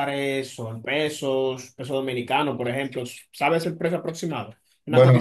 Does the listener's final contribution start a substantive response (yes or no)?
yes